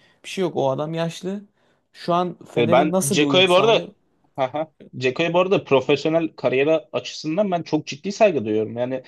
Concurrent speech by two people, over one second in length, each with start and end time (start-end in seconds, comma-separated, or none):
2.6-3.8